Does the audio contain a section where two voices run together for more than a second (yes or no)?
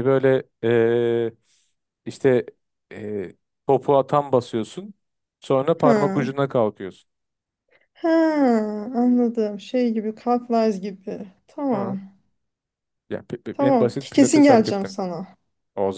yes